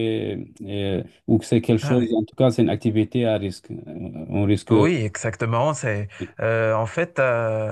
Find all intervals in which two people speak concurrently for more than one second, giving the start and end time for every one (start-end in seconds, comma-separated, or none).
none